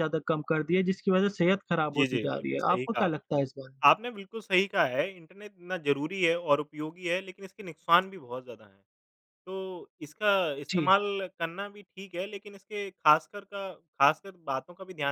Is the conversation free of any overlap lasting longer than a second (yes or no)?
no